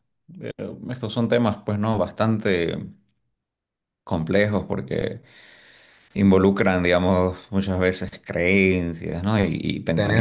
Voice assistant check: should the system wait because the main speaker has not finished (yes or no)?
yes